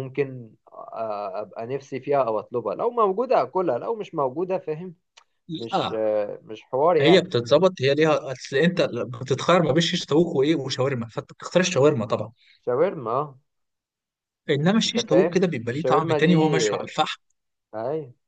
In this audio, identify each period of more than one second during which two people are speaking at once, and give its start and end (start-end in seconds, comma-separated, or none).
14.9-16.3